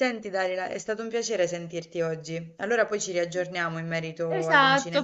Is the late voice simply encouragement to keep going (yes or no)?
no